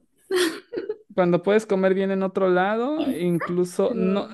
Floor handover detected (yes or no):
no